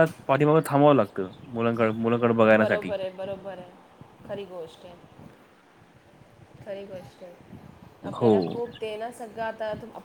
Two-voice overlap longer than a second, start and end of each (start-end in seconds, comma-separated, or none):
none